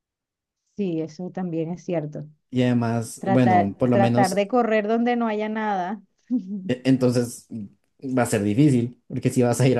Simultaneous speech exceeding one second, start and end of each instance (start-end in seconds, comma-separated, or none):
3.2-4.4